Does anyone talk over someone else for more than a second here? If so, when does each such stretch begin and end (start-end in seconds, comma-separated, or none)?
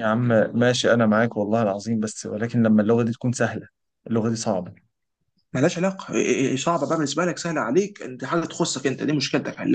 none